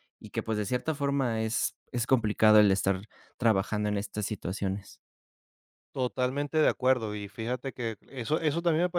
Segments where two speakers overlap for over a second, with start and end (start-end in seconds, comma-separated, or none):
none